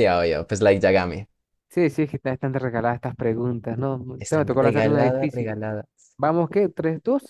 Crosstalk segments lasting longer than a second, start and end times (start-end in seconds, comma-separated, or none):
4.2-5.6